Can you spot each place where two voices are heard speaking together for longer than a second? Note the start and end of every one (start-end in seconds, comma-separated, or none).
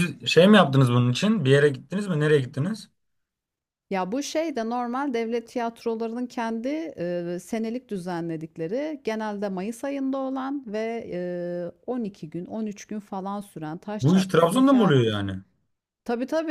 14.0-15.3